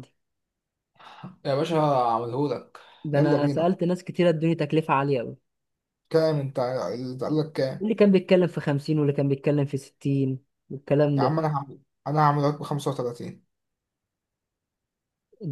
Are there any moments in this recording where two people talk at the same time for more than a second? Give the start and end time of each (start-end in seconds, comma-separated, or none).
none